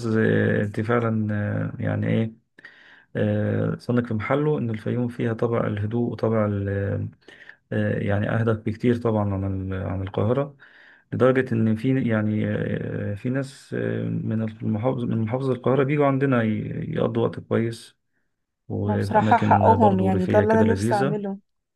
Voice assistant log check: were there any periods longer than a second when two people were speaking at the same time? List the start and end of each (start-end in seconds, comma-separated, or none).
18.9-21.2